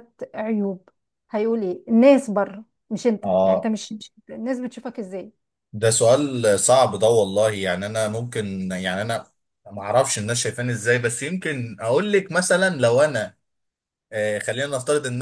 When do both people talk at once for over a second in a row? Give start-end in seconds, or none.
none